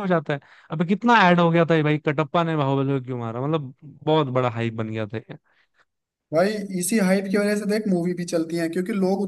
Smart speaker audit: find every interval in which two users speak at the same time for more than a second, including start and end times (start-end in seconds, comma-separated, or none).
none